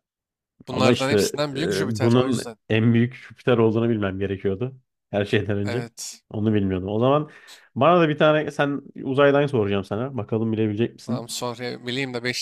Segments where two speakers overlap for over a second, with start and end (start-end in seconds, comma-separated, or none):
0.7-2.6